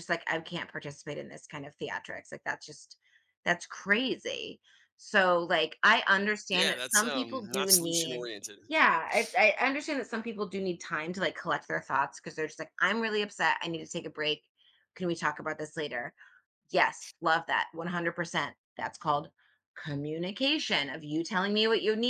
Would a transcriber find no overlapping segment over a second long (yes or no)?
no